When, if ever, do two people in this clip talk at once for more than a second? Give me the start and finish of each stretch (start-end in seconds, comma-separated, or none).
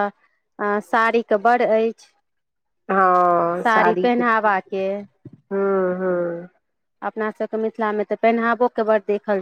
3.6-4.8